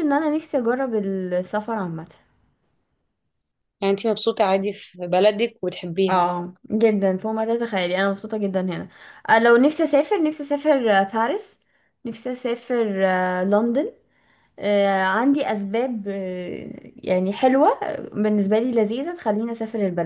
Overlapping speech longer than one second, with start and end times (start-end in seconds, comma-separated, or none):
none